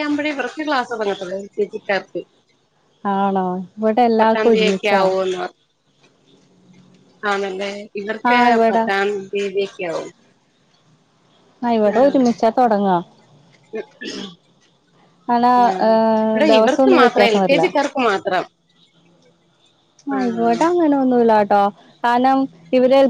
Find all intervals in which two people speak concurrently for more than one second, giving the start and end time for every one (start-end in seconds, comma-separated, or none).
15.7-17.4